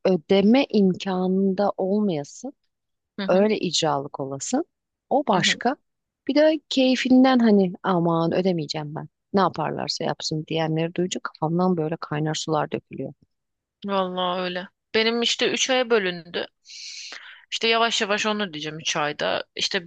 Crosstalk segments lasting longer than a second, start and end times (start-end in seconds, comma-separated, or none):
none